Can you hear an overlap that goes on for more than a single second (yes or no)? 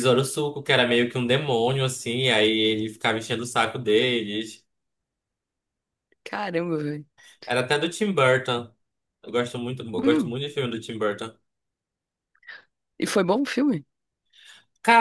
no